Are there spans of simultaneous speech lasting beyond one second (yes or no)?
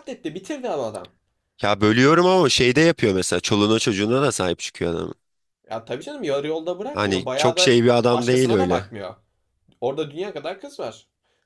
yes